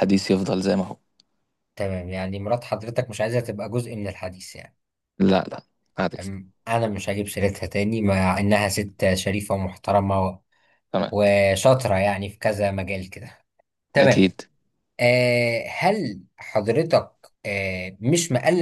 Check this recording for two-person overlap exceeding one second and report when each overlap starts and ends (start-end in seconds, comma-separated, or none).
none